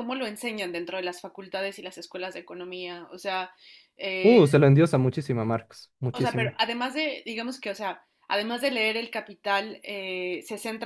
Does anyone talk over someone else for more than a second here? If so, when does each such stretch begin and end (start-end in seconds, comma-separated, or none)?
none